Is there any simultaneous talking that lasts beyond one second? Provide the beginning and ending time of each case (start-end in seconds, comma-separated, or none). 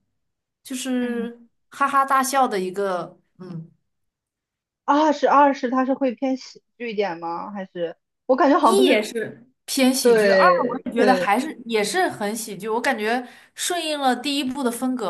10.0-11.3